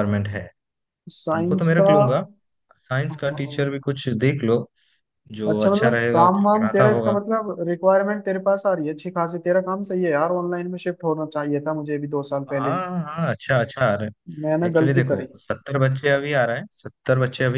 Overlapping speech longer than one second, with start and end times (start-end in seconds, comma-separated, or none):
5.5-7.2